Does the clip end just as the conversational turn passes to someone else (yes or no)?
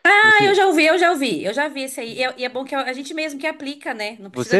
yes